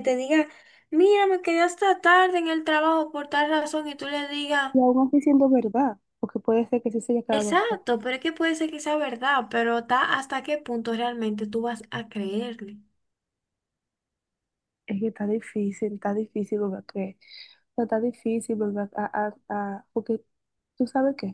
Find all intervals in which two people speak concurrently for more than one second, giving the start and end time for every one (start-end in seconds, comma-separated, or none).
none